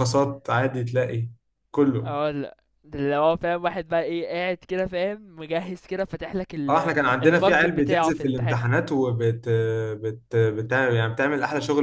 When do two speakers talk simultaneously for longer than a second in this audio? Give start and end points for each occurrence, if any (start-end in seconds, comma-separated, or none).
6.7-8.6